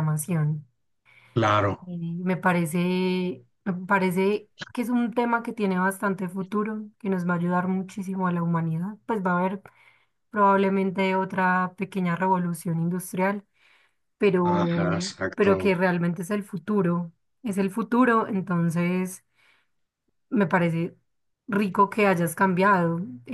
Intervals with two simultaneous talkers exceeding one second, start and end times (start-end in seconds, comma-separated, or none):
14.4-15.7